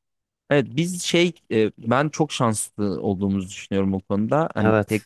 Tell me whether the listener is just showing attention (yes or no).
yes